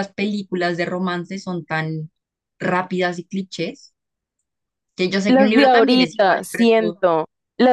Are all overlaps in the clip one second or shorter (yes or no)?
no